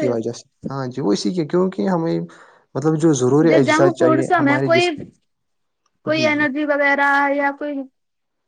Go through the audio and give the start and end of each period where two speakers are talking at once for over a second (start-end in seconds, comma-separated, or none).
none